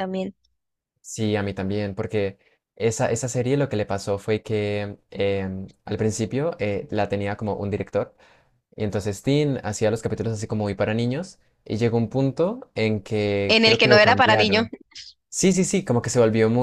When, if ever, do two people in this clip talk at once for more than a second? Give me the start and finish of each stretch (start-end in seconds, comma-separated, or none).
13.5-14.7